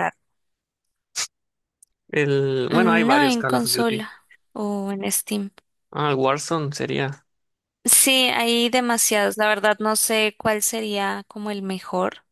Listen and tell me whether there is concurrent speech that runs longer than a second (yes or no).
yes